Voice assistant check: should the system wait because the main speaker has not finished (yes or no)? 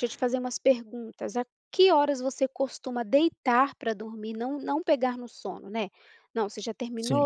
yes